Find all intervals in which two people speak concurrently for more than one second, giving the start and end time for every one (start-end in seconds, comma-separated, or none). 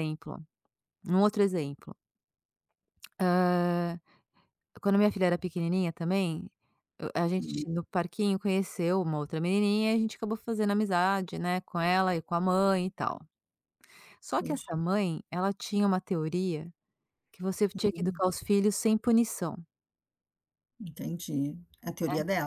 none